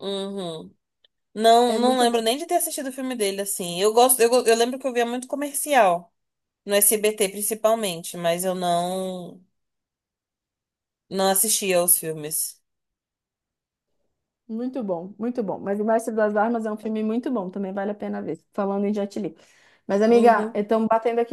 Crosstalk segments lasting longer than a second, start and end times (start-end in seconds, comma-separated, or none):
none